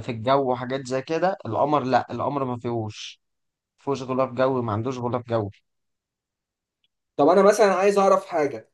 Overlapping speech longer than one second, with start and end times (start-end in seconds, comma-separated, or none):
none